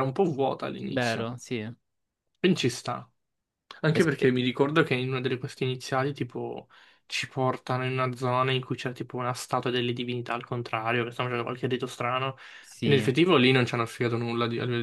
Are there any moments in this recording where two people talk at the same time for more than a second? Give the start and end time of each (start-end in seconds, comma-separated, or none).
none